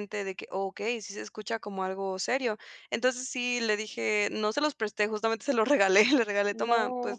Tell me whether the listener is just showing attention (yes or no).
yes